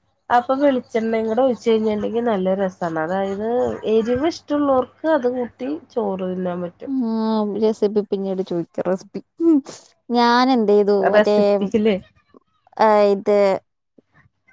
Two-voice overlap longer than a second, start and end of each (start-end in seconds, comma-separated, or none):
none